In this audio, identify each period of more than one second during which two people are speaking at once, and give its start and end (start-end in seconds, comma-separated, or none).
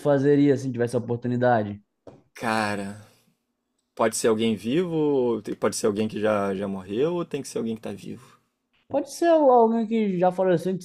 none